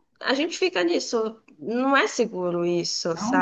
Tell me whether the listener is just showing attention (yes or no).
no